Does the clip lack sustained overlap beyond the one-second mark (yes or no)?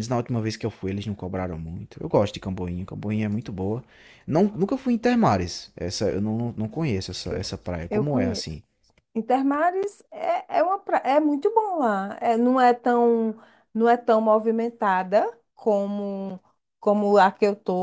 yes